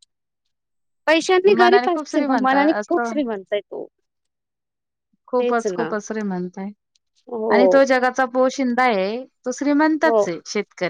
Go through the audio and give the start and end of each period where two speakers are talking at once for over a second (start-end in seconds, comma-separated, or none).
1.6-3.1